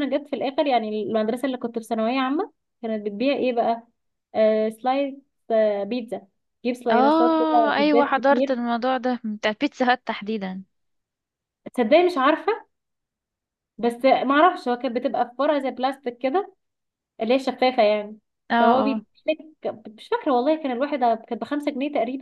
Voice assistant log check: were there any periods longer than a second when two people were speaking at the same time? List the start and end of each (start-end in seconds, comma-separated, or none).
6.9-8.6